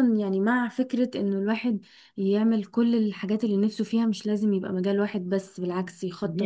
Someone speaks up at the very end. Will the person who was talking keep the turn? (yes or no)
yes